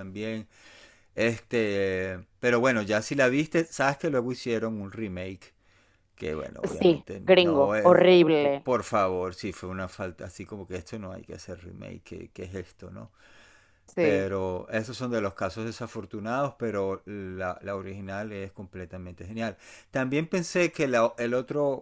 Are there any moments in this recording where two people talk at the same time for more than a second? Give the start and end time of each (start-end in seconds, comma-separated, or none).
6.6-8.7